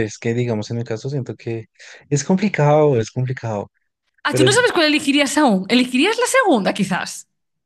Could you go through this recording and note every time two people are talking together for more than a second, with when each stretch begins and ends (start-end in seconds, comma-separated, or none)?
none